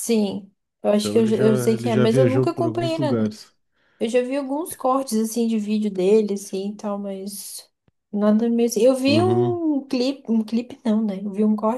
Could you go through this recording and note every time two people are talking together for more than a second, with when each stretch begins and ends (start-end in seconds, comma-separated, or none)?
1.0-3.2